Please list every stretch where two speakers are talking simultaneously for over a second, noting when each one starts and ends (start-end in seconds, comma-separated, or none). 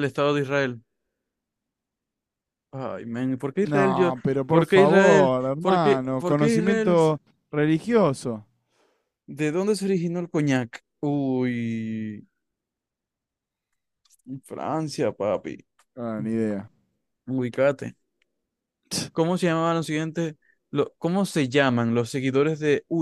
3.6-7.0